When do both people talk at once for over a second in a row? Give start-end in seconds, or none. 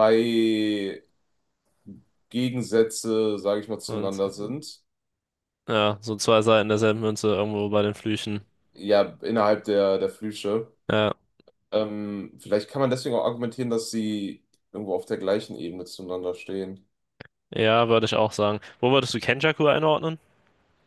none